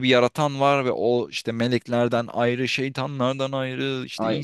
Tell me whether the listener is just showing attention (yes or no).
yes